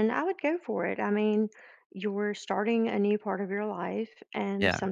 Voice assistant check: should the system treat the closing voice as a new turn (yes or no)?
no